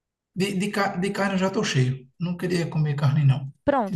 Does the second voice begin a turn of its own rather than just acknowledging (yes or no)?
yes